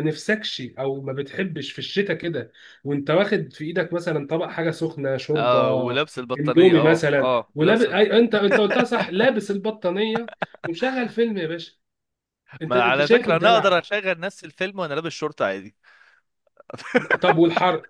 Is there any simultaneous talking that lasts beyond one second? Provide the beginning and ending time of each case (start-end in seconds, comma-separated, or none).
6.4-8.1, 12.7-13.9